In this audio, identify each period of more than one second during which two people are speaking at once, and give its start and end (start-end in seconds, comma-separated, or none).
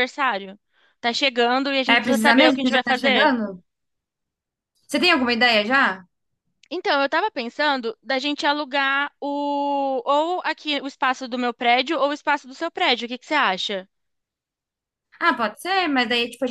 1.9-3.3